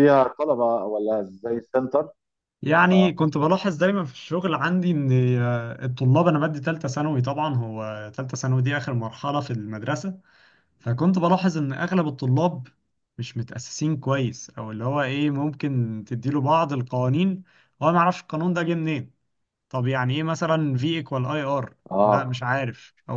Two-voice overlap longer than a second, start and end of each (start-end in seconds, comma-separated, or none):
none